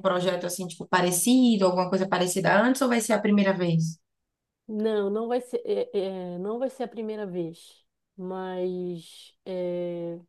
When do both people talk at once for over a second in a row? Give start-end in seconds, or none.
none